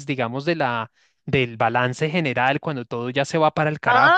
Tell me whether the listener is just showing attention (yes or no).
no